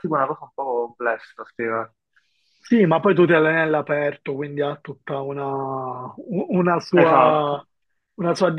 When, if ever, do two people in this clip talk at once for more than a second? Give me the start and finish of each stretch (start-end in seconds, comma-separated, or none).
none